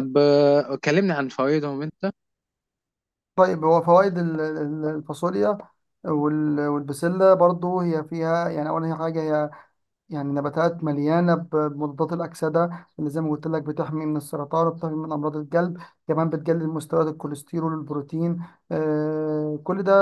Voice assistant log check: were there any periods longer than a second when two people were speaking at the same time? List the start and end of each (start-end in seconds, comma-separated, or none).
none